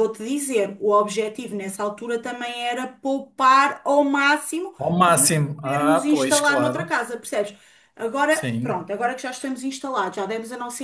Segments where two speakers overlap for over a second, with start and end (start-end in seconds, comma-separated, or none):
4.8-6.9